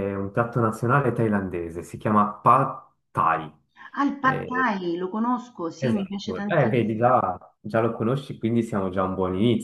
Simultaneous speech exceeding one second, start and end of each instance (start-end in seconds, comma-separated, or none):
5.8-7.2